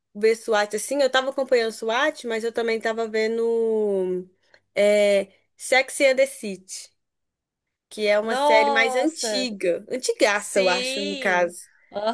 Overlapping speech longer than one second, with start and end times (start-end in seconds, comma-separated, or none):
8.2-9.5, 10.3-11.5